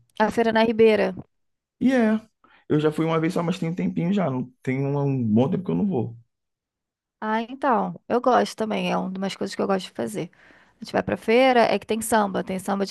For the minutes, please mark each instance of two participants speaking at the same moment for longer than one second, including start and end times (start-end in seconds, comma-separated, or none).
none